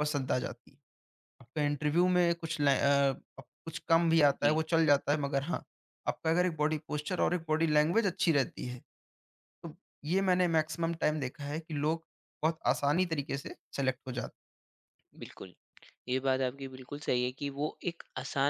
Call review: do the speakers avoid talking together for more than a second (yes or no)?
yes